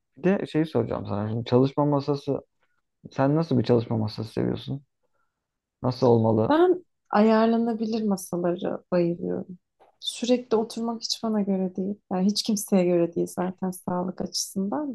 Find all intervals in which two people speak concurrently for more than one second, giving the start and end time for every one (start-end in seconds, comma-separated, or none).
none